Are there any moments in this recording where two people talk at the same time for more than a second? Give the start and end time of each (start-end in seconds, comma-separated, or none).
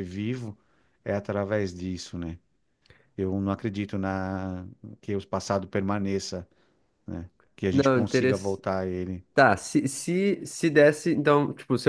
none